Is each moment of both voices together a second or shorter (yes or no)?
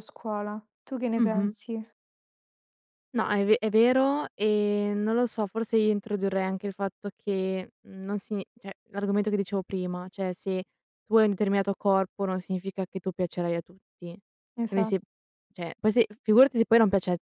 yes